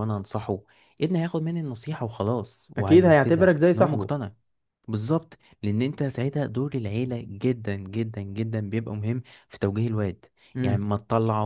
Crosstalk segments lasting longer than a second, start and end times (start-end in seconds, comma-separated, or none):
2.8-4.1